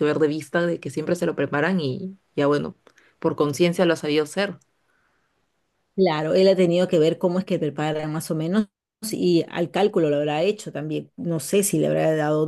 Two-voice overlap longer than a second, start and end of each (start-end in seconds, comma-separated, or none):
none